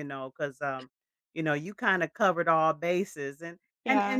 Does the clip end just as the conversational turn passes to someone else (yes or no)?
no